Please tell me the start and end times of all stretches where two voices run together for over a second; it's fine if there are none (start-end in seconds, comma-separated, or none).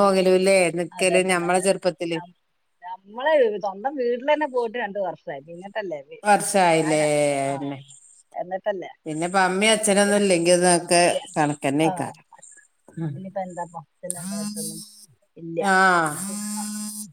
none